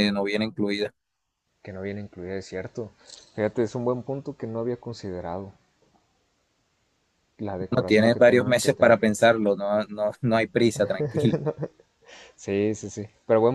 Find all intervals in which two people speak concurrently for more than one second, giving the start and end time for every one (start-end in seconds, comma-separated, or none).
7.7-9.0